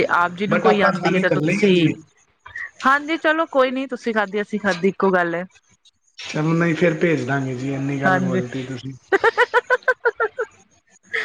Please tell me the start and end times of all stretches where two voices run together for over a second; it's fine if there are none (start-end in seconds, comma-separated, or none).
0.5-1.7